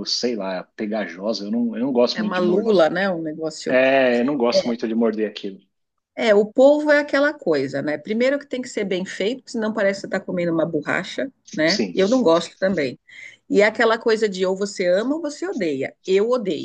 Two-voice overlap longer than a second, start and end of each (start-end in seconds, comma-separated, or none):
none